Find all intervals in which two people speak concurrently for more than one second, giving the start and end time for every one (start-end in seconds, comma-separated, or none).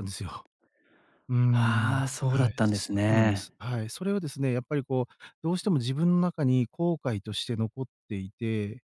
1.5-3.5